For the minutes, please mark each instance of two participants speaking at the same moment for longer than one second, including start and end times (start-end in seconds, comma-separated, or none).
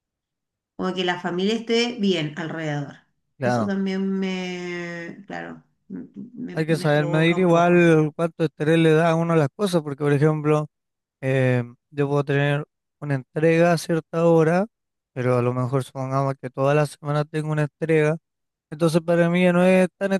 6.5-7.9